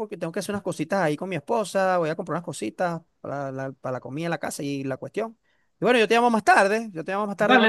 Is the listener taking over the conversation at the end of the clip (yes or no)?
yes